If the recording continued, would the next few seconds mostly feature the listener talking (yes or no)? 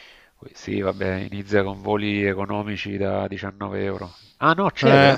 no